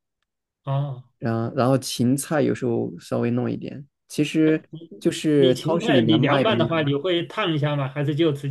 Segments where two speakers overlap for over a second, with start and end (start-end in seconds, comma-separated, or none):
5.4-6.9